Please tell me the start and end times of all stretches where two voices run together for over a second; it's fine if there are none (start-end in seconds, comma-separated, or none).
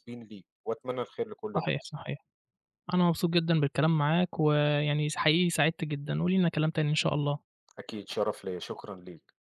none